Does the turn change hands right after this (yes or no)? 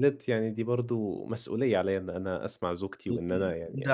yes